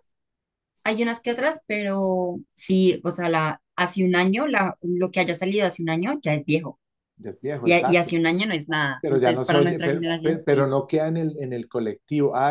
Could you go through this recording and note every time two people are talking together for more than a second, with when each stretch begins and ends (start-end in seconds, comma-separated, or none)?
9.0-10.7